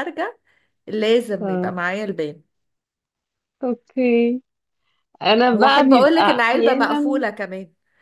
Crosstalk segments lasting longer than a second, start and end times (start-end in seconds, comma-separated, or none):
5.5-7.2